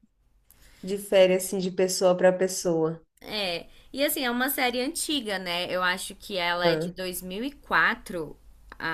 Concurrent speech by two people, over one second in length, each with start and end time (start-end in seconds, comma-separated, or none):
none